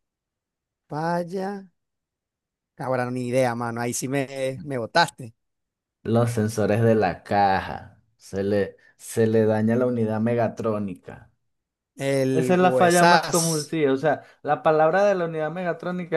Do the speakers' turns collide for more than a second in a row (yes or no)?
yes